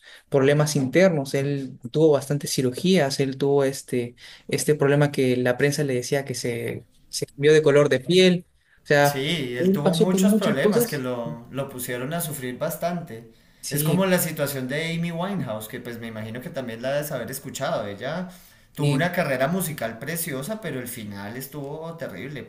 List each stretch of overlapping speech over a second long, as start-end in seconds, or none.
9.0-11.0